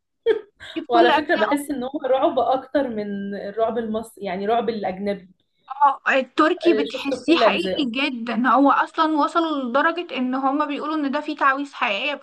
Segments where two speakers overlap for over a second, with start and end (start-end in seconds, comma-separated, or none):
6.6-7.9